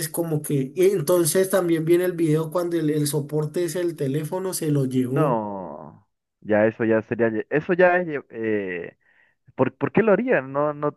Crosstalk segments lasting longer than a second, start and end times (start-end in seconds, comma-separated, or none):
none